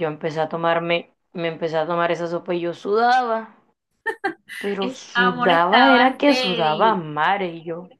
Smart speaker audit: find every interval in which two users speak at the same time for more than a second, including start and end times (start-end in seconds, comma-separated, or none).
4.8-7.0